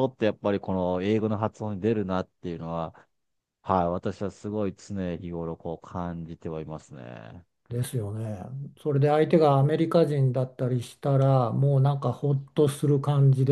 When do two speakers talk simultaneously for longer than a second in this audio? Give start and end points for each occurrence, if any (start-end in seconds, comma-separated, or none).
none